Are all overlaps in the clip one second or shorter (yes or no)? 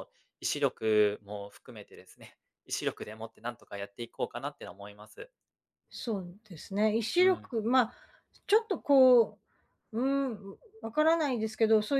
yes